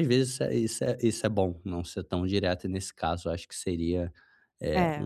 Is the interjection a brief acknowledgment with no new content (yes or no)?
yes